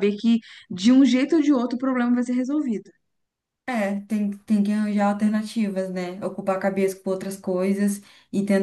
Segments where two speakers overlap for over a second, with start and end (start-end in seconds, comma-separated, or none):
none